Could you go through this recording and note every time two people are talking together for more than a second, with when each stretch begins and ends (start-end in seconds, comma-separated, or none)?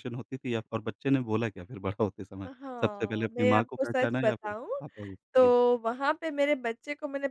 2.5-4.7